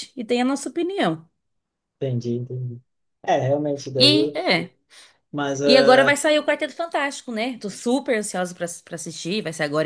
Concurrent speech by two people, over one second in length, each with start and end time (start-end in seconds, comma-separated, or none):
none